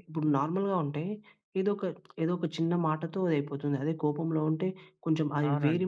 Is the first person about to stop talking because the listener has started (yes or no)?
no